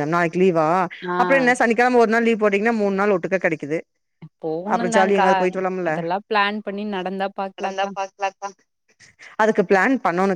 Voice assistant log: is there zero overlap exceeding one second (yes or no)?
yes